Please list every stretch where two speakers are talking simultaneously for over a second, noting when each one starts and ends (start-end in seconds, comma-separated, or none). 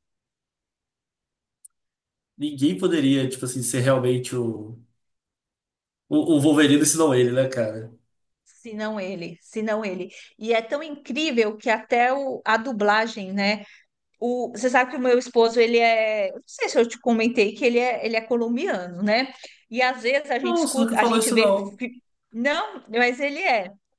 20.4-21.8